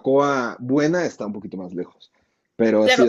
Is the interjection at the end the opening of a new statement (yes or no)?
yes